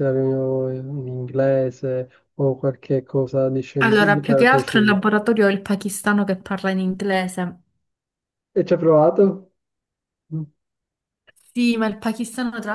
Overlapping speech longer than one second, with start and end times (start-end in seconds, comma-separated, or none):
3.8-5.0